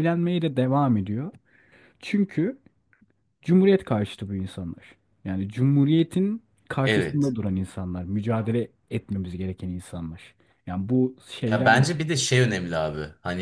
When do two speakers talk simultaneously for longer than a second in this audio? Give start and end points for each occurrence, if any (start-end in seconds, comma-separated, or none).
none